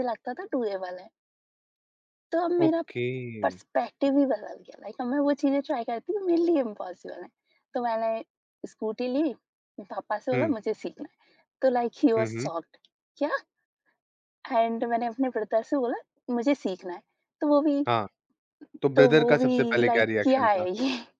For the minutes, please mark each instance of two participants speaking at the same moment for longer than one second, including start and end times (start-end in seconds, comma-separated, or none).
19.0-20.6